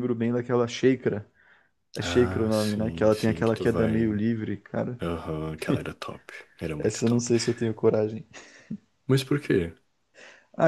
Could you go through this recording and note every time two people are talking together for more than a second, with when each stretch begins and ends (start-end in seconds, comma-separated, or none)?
2.0-4.2